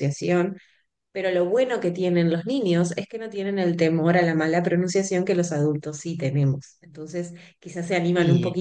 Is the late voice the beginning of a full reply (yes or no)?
no